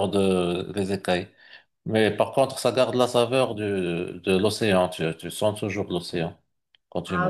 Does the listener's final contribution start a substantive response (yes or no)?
yes